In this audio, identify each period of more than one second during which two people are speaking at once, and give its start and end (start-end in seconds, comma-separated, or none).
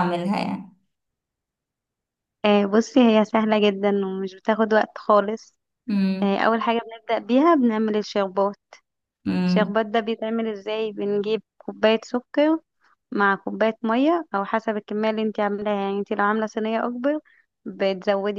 none